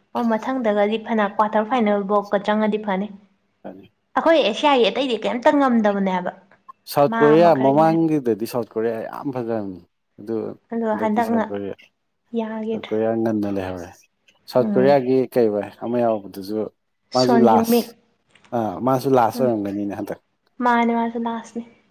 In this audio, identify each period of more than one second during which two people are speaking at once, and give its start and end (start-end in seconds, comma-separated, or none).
none